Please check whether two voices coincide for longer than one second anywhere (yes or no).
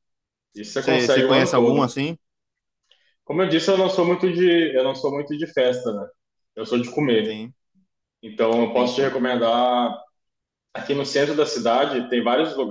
yes